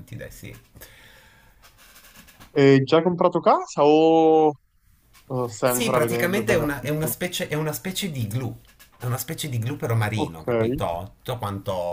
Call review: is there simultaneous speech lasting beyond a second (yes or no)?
yes